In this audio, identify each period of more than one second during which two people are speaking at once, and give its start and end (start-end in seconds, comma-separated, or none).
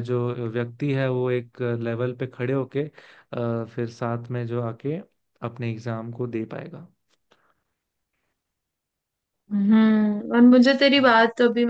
none